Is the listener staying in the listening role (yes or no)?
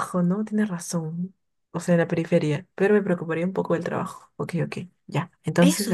no